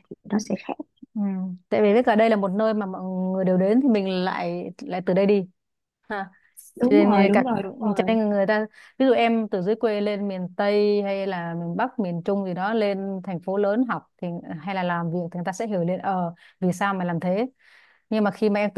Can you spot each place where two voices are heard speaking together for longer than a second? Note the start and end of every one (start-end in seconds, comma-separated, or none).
6.8-8.2